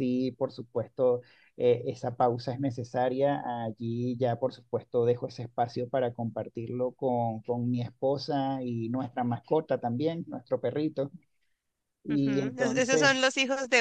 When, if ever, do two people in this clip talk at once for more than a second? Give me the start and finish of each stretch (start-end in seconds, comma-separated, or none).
12.1-13.3